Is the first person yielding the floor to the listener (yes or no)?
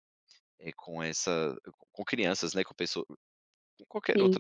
yes